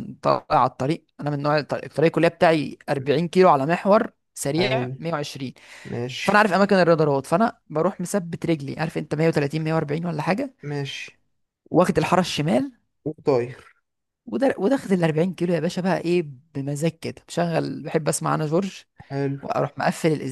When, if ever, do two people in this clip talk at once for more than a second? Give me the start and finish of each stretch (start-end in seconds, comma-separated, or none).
none